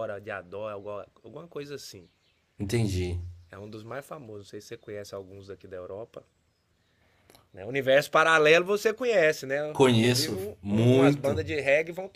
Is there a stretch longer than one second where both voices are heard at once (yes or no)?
yes